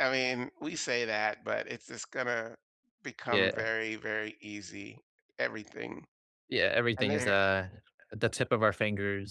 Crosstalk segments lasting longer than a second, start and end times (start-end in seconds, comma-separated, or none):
none